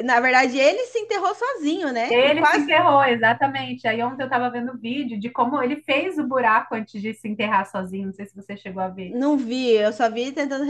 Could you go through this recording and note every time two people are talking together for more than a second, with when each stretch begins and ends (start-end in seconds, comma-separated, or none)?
none